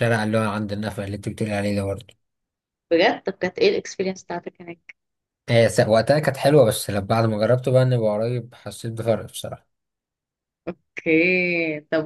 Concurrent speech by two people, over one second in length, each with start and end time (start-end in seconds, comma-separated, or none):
none